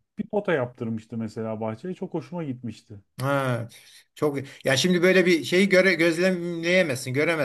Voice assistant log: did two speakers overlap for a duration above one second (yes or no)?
no